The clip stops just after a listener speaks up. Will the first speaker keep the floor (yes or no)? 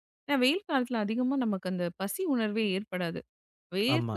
yes